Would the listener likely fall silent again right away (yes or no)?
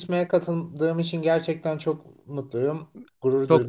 no